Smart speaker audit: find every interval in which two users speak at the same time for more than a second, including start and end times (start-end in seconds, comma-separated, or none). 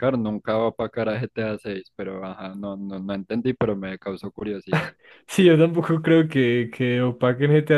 none